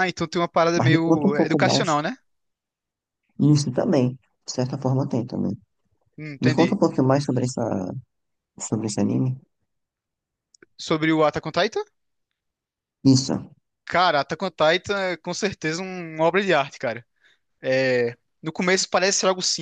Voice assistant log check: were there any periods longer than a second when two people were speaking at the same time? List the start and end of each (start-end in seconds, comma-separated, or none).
0.8-2.0